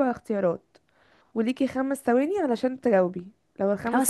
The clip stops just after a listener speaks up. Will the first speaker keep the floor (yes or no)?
yes